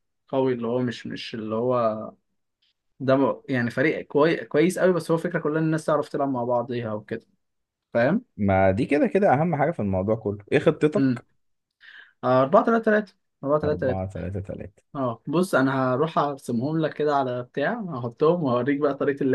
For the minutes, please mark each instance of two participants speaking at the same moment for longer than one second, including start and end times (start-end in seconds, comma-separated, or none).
none